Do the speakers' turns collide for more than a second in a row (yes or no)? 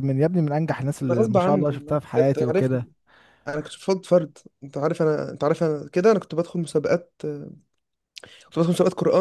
yes